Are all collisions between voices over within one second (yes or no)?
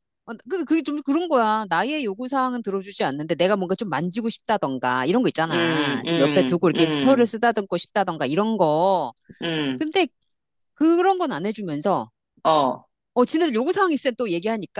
no